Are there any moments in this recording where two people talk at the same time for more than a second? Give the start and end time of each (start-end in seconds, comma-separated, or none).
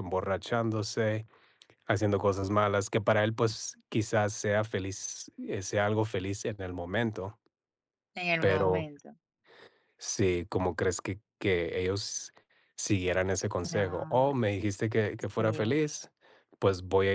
none